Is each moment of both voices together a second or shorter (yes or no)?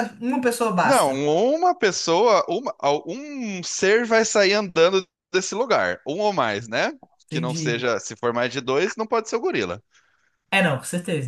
yes